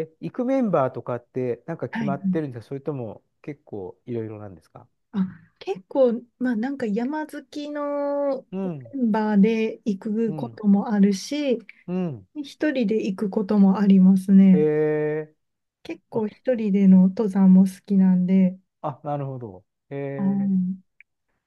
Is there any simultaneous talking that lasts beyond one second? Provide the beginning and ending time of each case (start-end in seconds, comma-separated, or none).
none